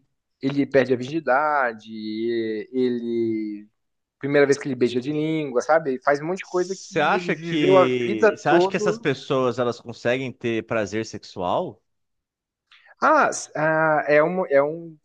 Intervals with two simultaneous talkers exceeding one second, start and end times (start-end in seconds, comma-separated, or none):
6.4-9.0